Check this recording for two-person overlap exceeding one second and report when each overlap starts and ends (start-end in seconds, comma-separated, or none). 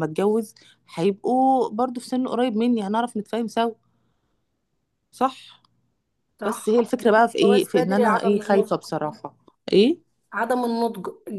7.4-8.7